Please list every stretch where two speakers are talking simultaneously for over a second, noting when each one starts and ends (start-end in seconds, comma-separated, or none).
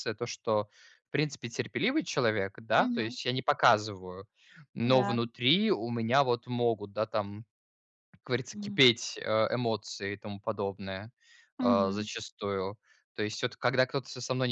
none